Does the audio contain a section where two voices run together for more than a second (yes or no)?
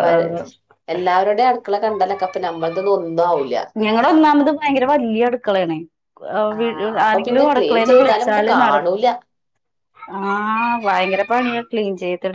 yes